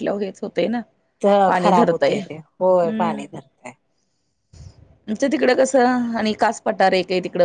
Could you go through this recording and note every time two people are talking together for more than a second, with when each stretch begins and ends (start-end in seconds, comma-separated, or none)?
1.6-3.2